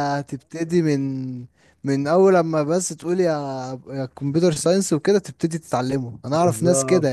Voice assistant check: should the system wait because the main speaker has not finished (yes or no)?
yes